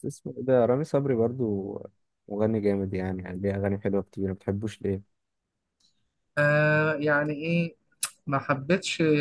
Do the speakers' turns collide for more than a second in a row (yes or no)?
no